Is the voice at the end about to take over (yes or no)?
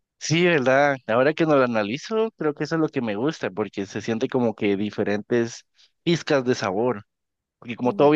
no